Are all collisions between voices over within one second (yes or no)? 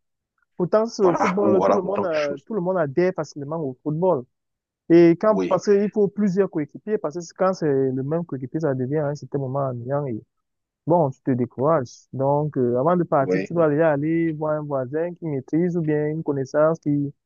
no